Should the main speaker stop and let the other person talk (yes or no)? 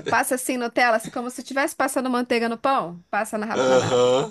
no